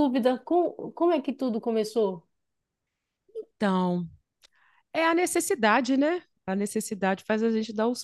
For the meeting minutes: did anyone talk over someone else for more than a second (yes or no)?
no